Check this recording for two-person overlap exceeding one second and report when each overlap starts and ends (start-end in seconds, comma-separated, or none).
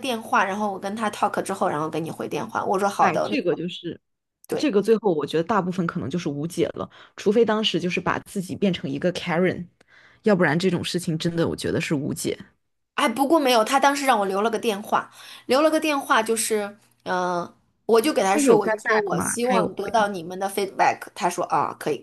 18.3-20.1